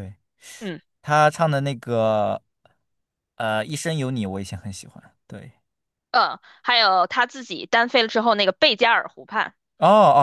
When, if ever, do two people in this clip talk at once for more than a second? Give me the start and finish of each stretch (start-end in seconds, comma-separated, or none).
none